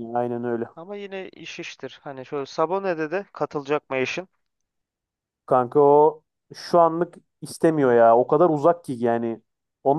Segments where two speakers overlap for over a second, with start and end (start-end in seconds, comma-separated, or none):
none